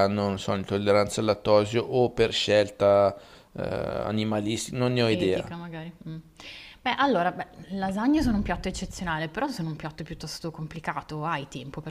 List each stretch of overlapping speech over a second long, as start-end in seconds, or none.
none